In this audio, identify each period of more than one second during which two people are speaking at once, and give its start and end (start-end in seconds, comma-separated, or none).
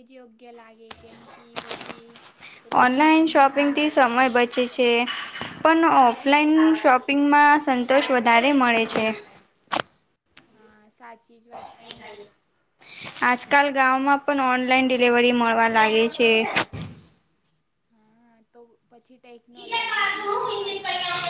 2.8-4.7